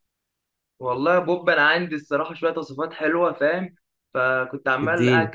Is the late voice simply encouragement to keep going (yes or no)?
yes